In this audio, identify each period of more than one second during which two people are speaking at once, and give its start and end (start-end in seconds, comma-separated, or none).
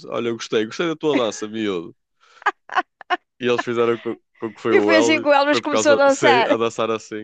4.7-6.6